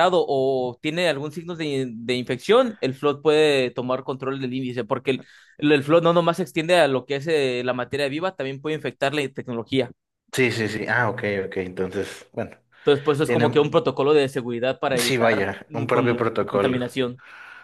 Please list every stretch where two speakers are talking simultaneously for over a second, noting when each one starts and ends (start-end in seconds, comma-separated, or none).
15.0-16.8